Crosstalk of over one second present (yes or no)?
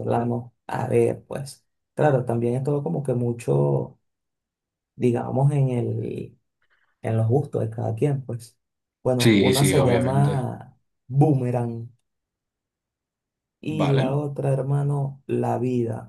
yes